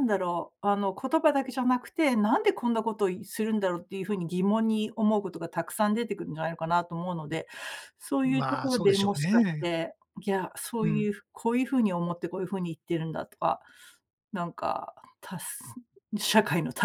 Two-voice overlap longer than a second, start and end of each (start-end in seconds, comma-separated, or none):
8.3-9.7